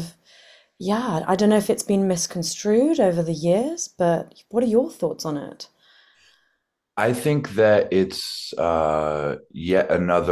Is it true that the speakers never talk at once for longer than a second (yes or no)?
yes